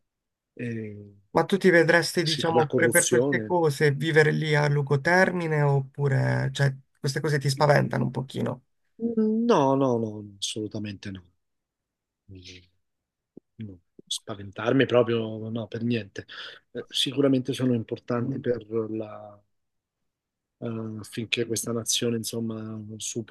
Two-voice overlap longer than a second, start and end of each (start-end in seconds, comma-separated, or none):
2.2-3.6